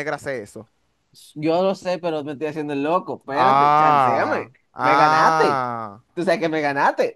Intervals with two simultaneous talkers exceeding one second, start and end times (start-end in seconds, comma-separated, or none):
3.3-5.6